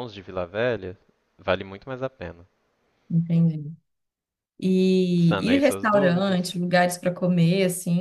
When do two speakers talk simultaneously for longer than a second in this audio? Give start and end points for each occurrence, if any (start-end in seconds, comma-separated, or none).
5.2-6.4